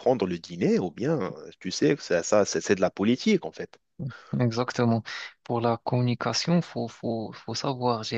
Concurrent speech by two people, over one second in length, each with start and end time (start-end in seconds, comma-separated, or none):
none